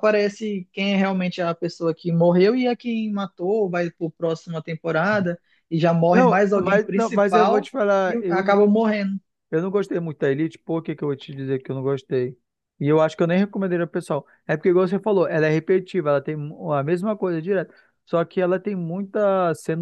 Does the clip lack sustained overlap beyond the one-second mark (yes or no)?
no